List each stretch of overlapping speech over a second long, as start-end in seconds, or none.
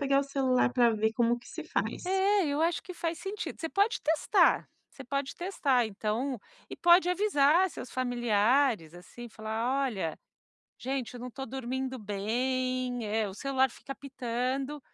none